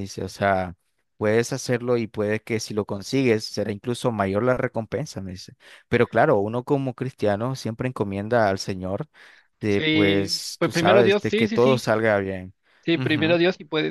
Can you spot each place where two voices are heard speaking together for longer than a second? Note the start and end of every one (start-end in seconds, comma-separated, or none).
9.7-11.9